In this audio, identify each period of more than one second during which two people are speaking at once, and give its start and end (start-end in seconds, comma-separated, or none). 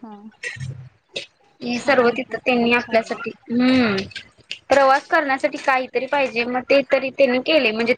1.8-3.2